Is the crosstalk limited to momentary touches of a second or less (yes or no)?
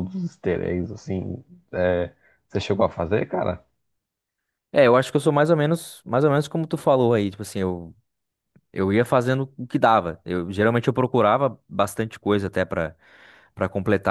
yes